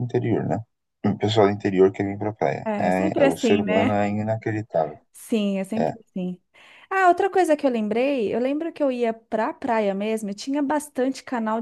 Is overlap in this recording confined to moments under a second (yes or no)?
no